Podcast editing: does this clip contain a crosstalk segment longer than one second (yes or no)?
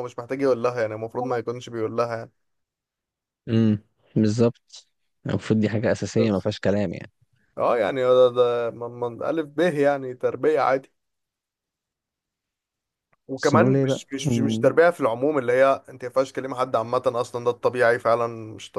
yes